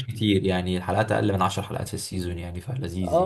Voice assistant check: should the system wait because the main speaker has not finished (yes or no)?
no